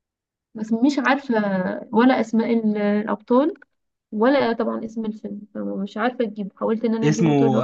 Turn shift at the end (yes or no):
yes